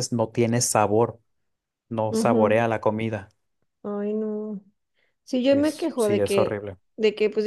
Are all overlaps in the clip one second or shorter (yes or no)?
no